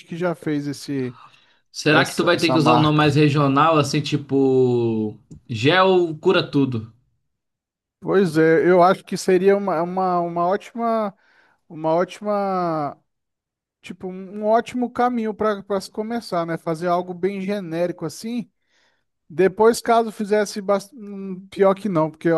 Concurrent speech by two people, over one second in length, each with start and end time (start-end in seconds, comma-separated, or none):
1.9-3.1